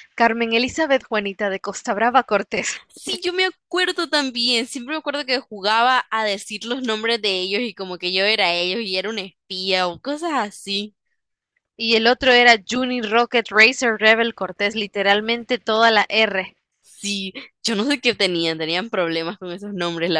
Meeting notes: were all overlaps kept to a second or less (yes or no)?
yes